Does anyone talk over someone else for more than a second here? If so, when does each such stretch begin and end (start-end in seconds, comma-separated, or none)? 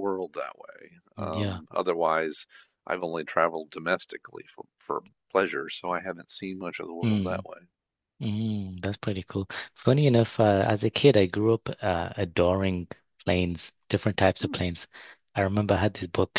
none